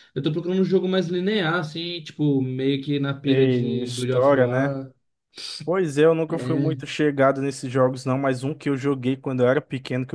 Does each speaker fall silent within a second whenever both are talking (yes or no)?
no